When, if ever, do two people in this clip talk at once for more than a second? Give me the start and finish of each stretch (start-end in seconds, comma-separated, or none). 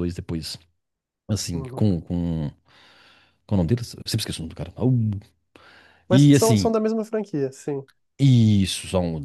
none